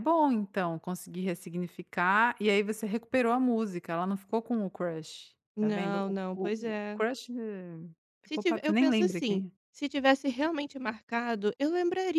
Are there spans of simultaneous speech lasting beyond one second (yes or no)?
yes